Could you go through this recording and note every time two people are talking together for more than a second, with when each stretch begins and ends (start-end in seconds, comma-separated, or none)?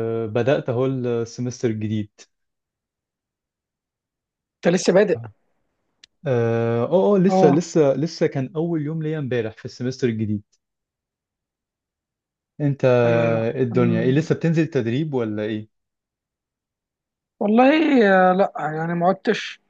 none